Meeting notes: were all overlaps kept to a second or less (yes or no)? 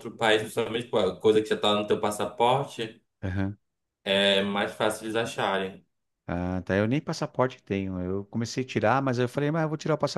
yes